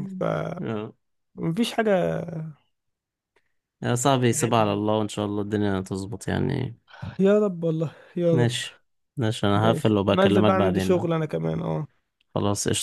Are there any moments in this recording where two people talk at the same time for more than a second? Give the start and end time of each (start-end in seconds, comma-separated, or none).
9.6-11.1